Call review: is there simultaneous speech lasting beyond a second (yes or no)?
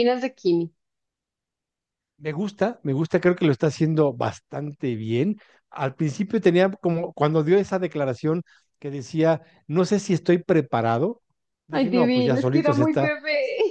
yes